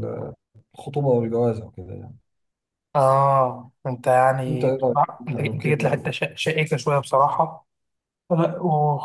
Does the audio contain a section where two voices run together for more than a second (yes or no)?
yes